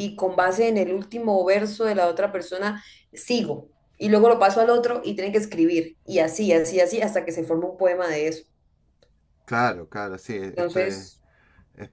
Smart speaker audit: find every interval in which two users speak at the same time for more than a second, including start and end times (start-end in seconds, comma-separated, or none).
none